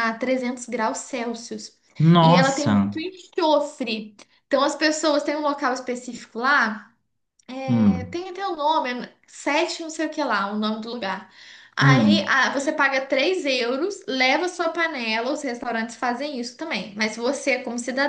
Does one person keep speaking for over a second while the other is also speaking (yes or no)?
no